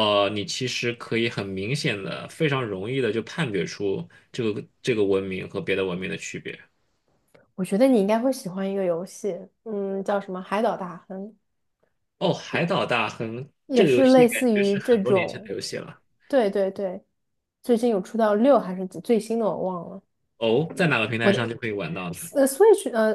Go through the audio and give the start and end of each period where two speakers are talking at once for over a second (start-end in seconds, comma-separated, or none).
13.7-15.6